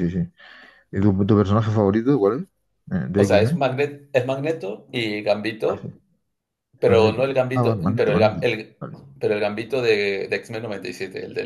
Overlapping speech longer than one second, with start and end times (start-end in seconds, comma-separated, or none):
6.8-8.8